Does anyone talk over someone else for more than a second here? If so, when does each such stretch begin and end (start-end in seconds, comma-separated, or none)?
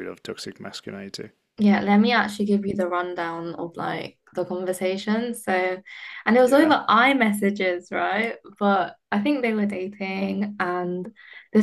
none